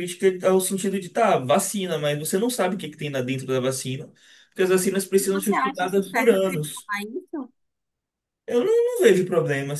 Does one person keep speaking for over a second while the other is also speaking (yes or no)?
yes